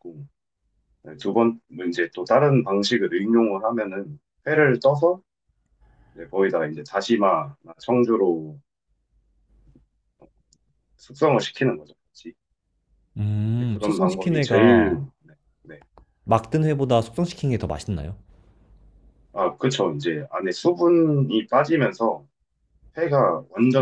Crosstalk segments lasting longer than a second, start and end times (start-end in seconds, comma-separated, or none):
13.6-15.1